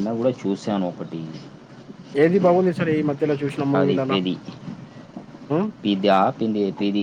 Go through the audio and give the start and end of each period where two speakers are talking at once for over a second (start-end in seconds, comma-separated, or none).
none